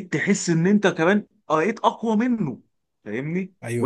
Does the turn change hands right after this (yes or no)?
no